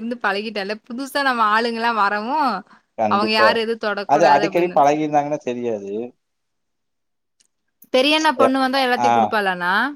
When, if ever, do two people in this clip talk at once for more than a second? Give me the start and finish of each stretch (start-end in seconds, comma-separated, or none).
none